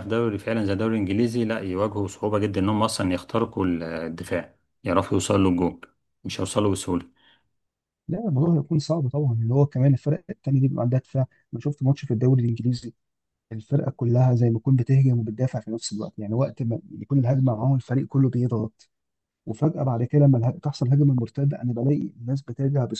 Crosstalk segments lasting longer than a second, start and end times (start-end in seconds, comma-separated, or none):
none